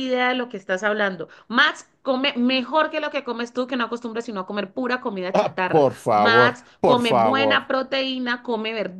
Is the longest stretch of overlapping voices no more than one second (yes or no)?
no